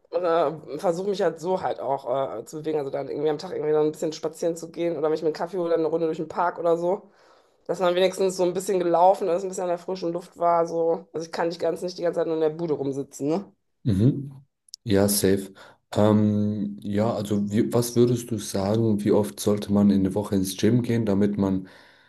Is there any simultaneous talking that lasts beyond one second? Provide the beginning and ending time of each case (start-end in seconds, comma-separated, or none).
none